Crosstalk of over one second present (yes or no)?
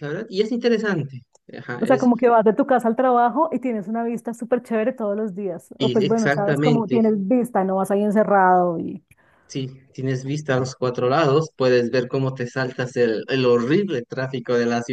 yes